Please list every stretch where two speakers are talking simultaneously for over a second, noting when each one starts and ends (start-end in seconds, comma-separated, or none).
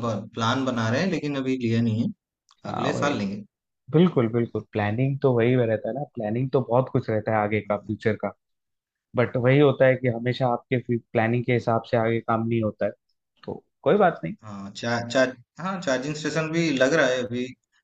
none